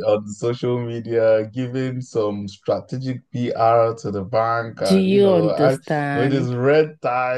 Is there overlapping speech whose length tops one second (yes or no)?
yes